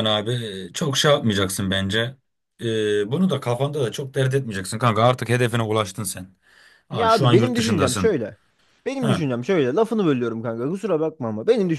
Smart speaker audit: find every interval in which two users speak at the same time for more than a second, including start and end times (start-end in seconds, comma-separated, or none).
6.9-8.2